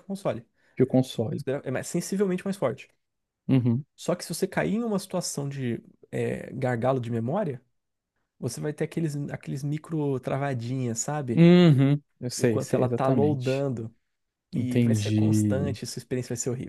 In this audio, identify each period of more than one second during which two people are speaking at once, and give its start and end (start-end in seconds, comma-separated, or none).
12.4-13.7, 14.5-15.8